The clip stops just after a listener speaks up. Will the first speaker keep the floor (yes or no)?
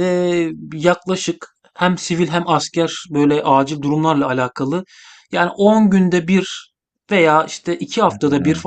yes